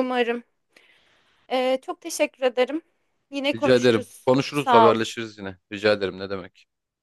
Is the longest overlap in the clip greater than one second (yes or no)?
yes